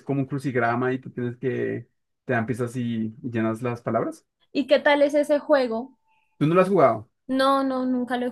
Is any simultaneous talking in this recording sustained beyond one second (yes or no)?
no